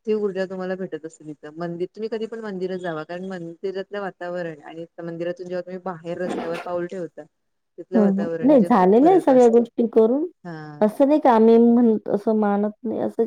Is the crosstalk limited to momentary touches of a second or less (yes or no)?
no